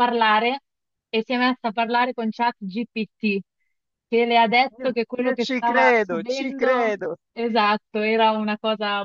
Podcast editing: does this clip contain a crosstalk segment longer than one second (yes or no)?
yes